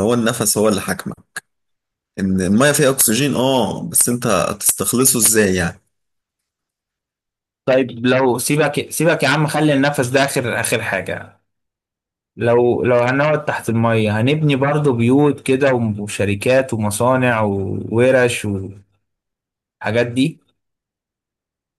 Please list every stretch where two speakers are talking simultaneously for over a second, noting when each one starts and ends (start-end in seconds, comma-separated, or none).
none